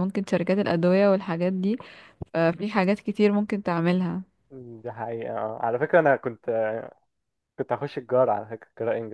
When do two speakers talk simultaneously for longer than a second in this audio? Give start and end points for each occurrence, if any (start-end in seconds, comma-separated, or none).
none